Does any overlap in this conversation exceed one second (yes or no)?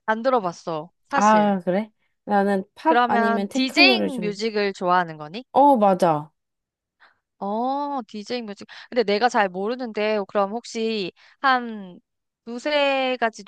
yes